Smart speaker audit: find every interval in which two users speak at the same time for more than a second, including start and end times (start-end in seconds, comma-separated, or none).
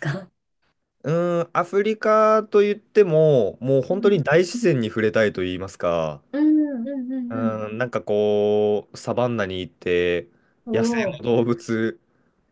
none